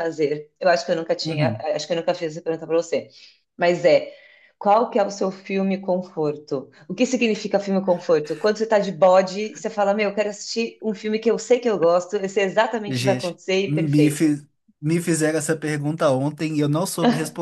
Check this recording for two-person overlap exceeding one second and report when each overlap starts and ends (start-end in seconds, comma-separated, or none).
12.9-14.3